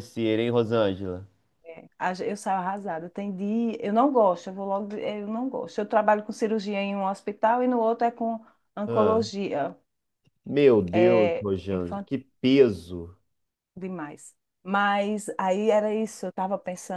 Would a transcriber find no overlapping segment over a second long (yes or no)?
yes